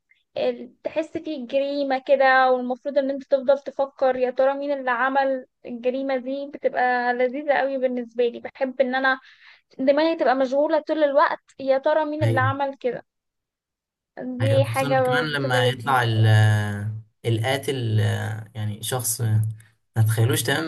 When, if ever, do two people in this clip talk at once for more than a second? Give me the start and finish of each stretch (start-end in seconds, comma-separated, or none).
14.4-16.1